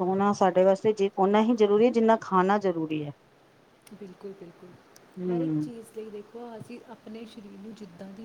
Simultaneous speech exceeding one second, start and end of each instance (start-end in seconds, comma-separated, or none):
none